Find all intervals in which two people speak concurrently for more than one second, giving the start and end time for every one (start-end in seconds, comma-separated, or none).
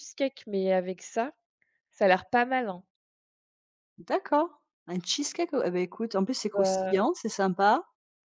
none